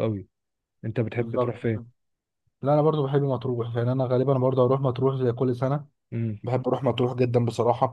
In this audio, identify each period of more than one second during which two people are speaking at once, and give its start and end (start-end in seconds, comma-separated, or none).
none